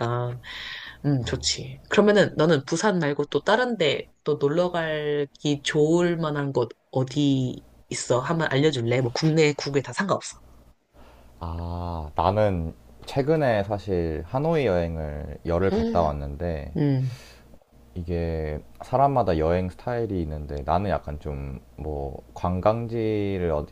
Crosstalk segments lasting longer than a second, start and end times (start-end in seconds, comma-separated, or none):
none